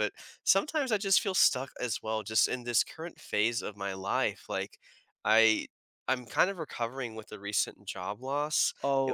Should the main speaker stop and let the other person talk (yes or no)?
no